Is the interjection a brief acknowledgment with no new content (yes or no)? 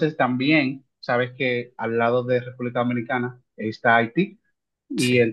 yes